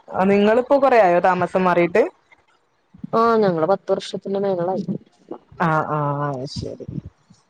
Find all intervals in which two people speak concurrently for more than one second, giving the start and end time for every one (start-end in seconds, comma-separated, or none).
none